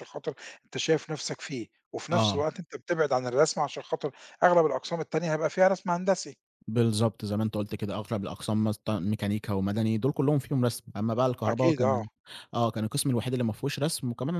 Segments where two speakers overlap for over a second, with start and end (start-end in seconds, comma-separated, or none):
none